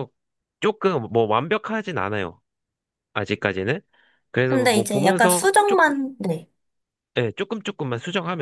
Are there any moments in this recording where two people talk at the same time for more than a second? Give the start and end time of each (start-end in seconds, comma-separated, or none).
4.5-6.0